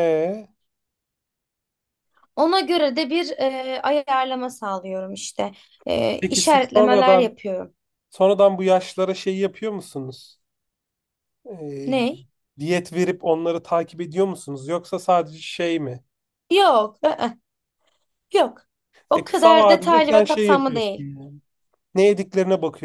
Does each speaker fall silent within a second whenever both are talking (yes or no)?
no